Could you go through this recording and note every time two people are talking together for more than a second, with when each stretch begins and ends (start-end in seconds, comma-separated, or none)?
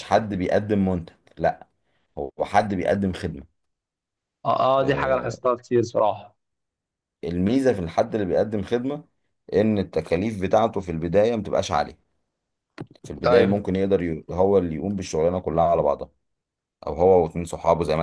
none